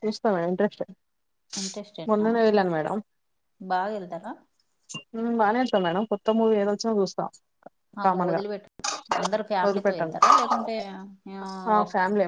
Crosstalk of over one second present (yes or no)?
no